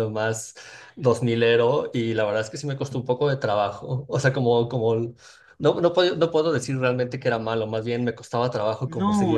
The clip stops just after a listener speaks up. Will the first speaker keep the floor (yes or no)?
no